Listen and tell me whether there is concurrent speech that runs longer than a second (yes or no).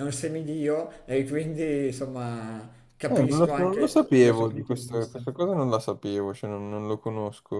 yes